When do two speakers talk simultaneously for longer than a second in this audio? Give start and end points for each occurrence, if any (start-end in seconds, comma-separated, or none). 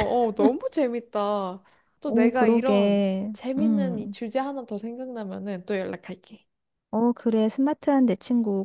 2.1-4.2